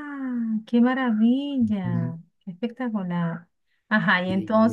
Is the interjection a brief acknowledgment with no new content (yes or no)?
no